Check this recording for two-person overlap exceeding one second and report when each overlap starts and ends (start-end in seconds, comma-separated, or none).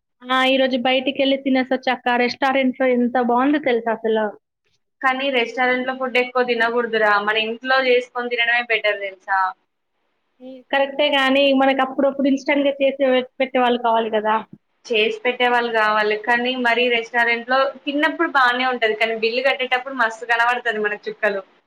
none